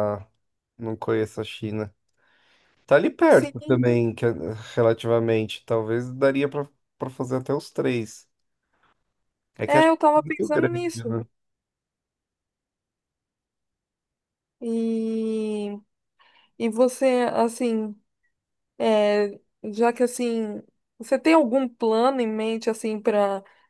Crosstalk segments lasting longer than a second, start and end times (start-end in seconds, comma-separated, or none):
9.7-11.2